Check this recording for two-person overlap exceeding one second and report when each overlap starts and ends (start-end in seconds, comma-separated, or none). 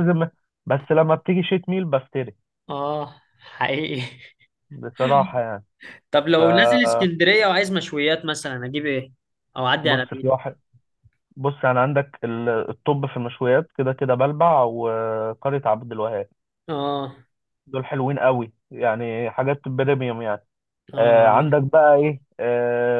none